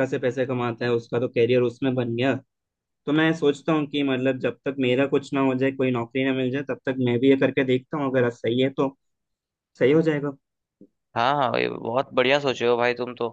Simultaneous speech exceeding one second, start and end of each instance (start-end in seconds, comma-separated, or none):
none